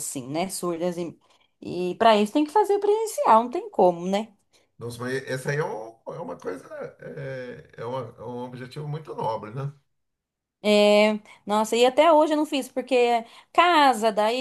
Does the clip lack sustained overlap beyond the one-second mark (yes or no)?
yes